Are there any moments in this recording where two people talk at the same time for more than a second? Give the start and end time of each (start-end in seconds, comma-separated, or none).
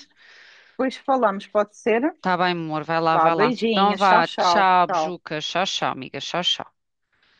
3.1-5.1